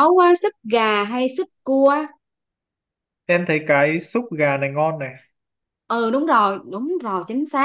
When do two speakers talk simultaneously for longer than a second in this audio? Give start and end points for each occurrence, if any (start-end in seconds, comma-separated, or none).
none